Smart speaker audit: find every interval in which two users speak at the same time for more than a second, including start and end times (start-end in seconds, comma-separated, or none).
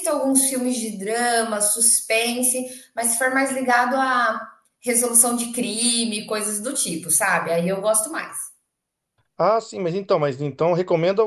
none